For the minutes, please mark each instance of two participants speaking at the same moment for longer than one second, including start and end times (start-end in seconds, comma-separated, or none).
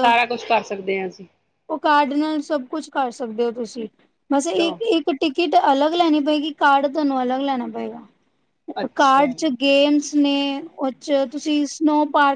none